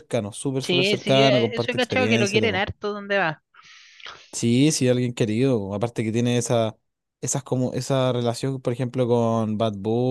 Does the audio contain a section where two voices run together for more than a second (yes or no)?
yes